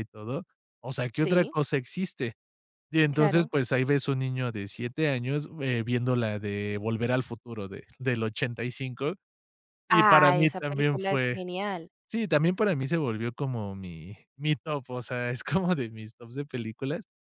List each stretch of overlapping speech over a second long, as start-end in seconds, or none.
9.9-11.4